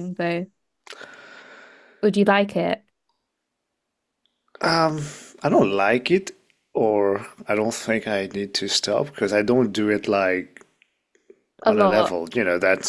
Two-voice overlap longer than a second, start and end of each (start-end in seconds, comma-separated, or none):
none